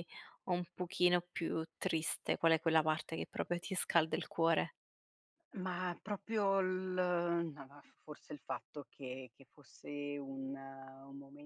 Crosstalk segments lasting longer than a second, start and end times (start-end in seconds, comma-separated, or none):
none